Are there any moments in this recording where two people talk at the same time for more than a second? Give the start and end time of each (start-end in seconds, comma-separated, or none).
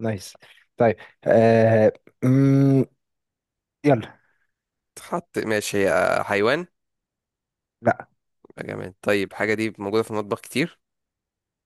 none